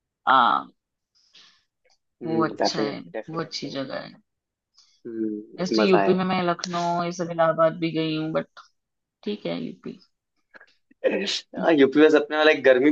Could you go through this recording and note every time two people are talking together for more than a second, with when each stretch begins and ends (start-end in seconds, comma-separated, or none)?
2.2-3.7